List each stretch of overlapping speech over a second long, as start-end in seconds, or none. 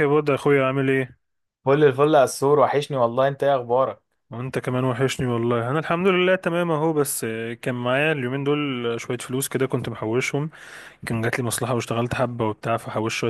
none